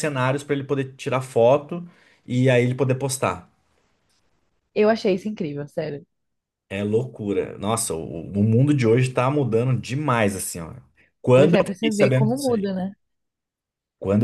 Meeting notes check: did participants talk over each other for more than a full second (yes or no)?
yes